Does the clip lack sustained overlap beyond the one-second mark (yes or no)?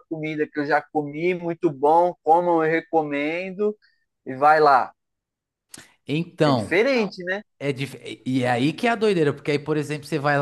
yes